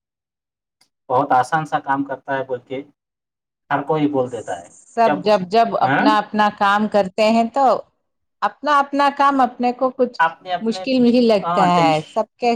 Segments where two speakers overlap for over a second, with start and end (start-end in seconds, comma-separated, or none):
none